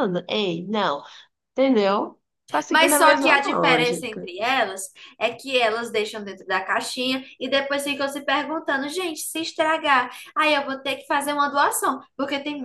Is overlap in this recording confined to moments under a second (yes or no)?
no